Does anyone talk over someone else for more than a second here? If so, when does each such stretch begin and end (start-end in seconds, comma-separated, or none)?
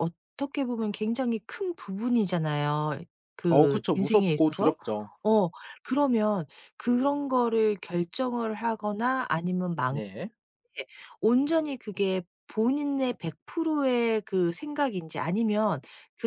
3.5-4.8